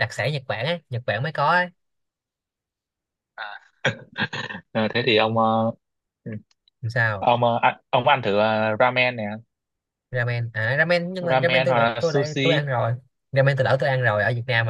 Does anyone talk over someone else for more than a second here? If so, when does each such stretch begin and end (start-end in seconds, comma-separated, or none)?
11.2-12.6